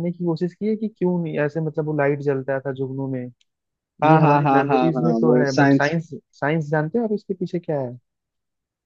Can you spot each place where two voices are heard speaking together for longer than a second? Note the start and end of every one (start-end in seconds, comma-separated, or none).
4.0-6.0